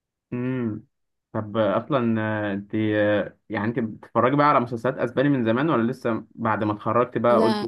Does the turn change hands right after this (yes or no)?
no